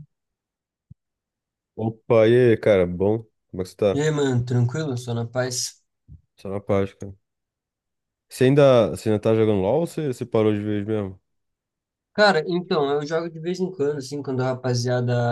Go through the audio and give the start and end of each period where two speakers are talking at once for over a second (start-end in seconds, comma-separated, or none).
none